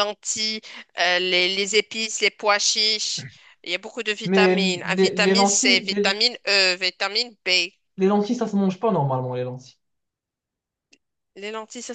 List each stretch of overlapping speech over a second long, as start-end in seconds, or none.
4.2-6.2